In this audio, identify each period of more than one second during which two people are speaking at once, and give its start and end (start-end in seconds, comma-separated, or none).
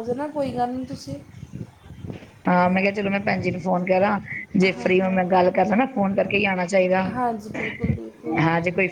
none